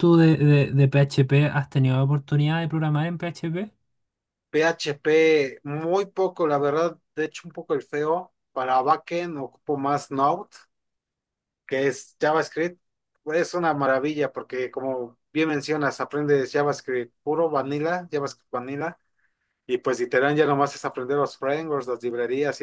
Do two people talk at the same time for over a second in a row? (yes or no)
no